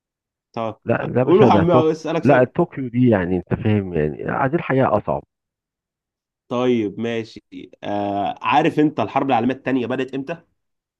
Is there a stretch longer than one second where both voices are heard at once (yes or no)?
yes